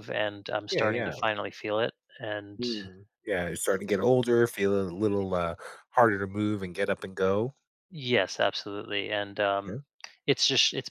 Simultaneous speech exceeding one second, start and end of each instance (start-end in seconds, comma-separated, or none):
none